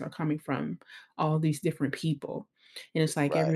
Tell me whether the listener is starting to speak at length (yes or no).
no